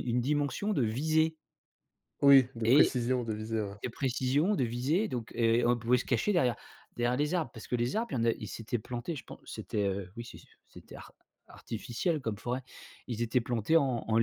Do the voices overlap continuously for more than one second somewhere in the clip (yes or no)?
no